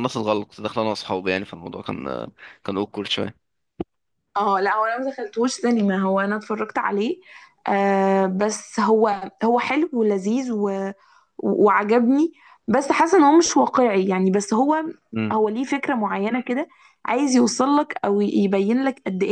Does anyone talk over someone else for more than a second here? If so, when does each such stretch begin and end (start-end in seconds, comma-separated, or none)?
none